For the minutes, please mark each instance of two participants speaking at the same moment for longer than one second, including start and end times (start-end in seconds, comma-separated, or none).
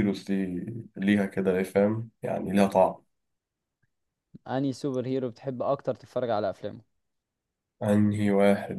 none